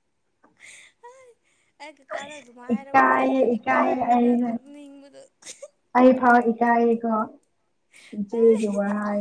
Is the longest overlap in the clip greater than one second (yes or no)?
yes